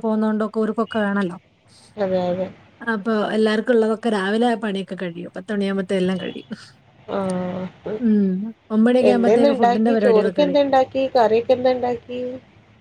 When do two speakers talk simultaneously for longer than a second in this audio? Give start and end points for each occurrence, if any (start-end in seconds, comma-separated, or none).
9.1-10.6